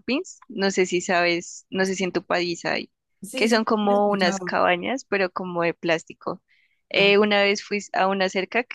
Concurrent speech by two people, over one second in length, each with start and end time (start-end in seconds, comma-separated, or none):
3.4-4.6